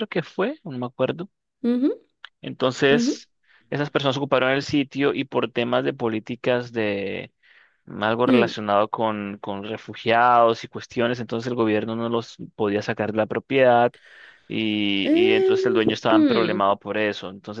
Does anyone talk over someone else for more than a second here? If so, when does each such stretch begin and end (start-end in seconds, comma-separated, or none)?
15.0-16.6